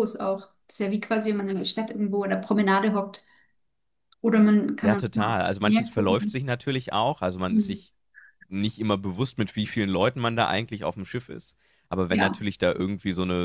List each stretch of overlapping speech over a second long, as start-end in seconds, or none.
4.8-6.5